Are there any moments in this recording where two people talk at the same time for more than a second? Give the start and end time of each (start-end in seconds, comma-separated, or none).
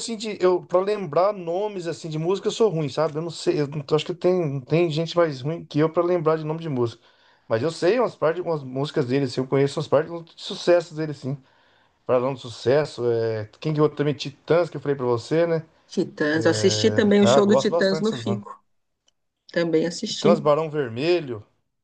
16.3-18.4